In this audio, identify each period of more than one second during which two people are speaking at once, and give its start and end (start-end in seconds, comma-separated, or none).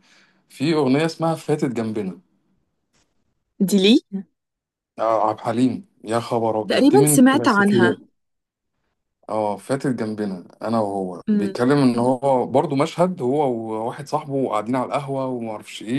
6.7-8.0